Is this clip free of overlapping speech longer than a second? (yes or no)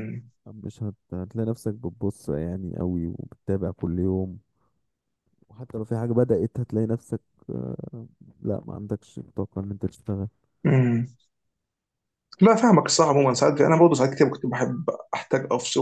yes